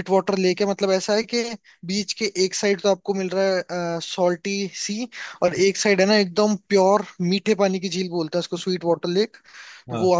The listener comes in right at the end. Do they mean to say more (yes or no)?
no